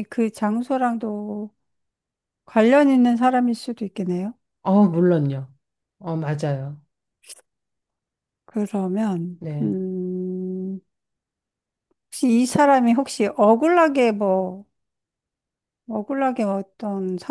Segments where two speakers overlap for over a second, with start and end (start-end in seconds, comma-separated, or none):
none